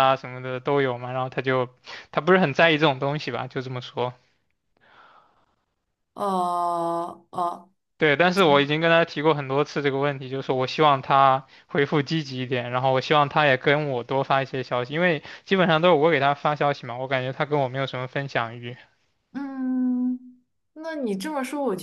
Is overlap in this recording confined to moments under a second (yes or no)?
yes